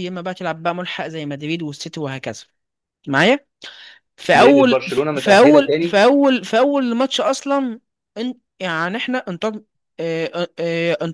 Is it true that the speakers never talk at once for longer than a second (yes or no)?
no